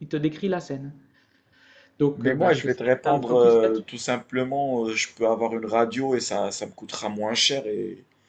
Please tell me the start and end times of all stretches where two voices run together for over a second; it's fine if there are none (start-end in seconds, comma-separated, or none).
2.2-3.8